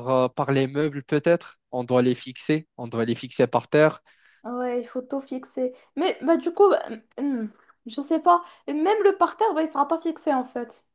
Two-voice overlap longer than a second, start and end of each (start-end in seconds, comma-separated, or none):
none